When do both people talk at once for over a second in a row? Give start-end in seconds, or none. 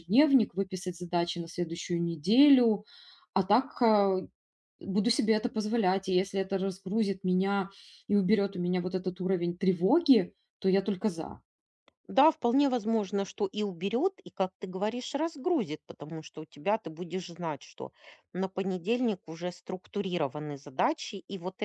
none